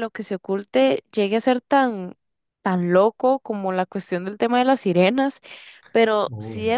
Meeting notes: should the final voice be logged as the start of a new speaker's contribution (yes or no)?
no